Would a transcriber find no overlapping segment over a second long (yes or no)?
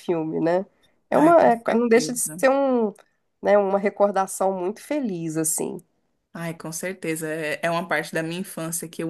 no